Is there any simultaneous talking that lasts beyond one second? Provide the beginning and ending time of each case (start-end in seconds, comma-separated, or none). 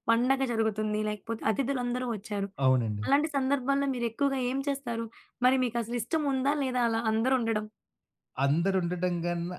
none